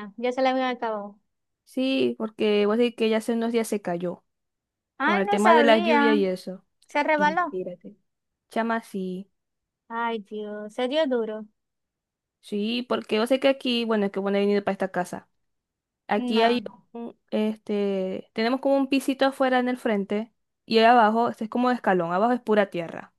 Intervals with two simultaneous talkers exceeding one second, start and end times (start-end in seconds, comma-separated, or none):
5.0-6.2